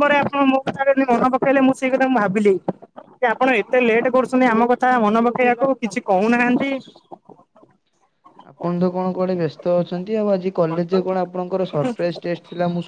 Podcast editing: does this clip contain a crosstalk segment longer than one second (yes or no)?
no